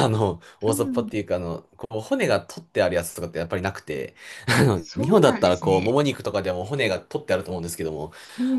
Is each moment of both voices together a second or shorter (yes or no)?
no